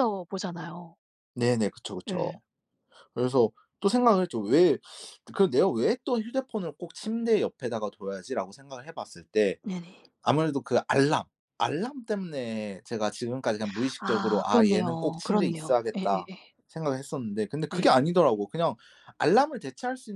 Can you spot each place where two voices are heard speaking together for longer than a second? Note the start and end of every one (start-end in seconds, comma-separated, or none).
14.0-16.3